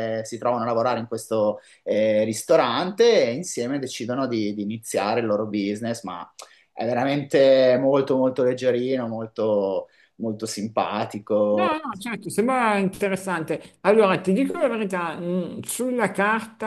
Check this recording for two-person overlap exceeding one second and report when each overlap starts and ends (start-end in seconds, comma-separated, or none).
none